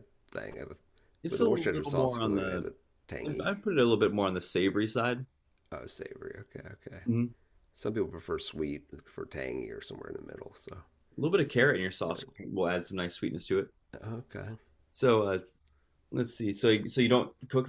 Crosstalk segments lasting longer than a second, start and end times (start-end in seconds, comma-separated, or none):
1.3-2.7